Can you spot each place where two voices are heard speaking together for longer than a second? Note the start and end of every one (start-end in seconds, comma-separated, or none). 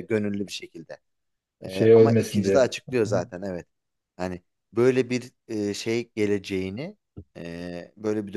1.7-3.2